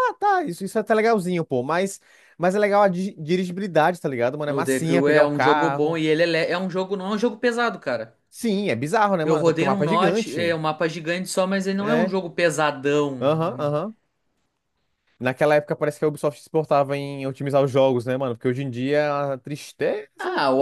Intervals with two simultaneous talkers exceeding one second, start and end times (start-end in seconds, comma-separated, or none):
4.5-6.0, 9.2-10.6